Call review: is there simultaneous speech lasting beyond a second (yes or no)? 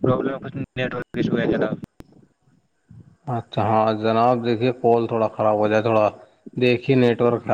no